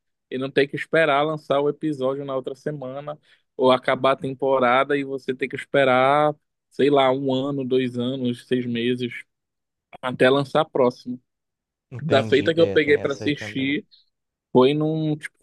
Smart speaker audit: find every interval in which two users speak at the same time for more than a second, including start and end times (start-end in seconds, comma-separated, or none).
12.0-13.8